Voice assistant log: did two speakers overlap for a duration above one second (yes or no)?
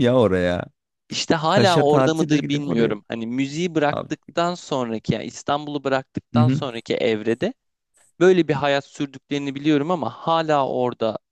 yes